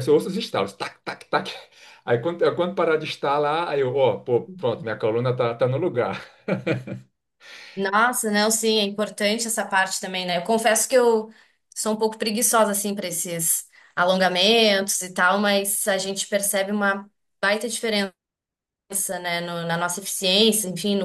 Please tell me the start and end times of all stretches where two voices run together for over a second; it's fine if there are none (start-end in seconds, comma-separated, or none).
none